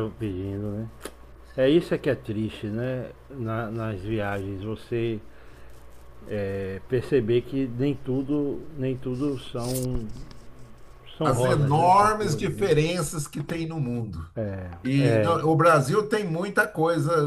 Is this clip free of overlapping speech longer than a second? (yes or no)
no